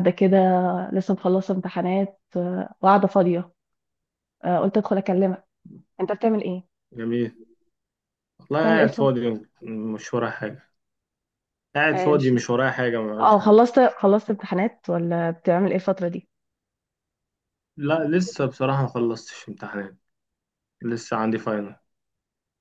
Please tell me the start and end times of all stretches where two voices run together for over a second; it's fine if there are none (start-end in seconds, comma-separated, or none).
none